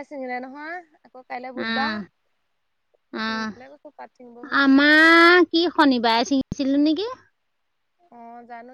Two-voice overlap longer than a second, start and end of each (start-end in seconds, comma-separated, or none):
none